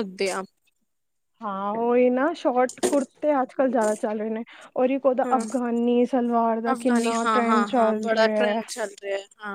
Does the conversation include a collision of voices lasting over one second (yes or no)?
yes